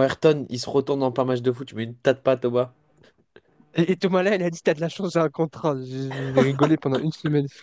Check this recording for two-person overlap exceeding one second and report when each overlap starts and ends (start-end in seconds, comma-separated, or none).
none